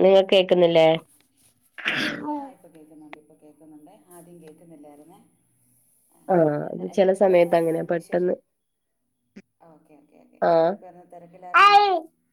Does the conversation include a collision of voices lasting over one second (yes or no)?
yes